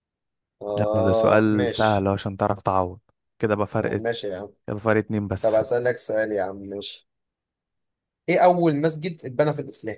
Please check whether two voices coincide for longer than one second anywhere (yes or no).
yes